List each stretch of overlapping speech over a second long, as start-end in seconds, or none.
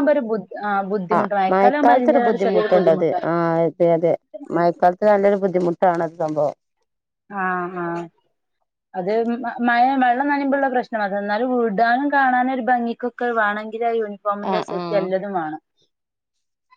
1.1-3.2